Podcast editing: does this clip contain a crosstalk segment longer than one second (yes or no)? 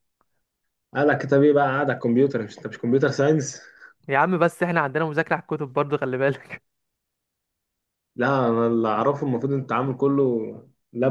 no